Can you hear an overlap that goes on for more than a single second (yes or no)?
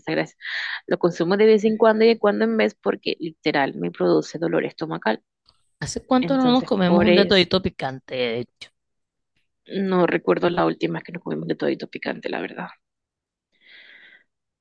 yes